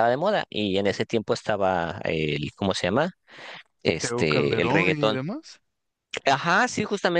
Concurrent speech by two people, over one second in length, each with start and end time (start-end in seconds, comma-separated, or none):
4.0-5.2